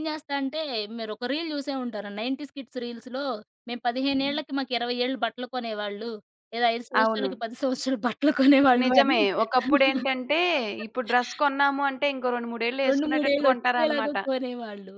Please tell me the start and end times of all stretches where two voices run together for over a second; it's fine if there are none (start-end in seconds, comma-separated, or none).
12.9-14.2